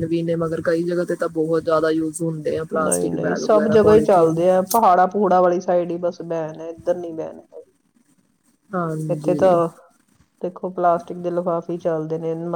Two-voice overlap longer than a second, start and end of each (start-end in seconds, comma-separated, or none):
2.8-4.3